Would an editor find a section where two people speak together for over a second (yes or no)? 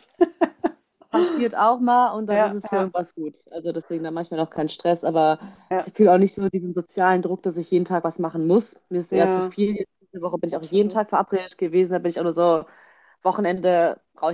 no